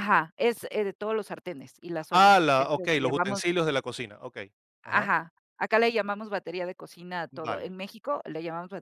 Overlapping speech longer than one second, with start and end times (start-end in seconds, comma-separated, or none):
2.1-3.4